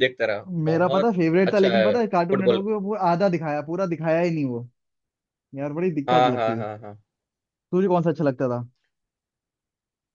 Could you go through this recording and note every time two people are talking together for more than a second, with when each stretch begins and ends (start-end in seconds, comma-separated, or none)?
0.7-2.6